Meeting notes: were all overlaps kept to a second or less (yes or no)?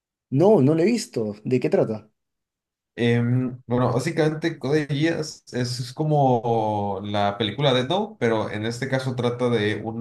yes